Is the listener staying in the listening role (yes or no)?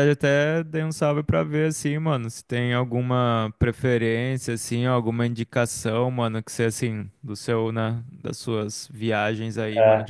yes